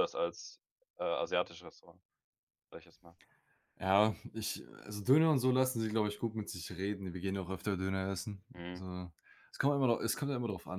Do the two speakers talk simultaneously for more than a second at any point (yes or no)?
no